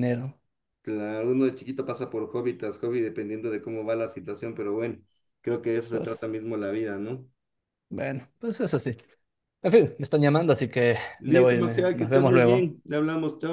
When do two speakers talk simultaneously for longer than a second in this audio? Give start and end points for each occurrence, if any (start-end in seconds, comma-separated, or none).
11.2-12.8